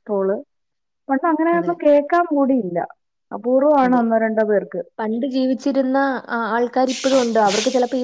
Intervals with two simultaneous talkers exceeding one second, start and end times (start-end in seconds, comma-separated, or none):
none